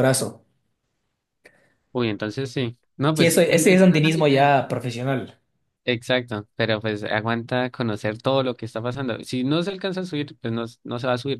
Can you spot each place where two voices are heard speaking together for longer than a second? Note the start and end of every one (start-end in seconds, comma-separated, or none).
3.2-4.5